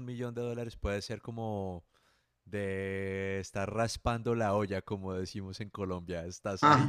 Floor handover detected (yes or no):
yes